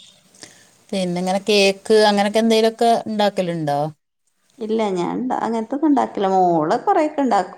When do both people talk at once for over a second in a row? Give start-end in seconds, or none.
none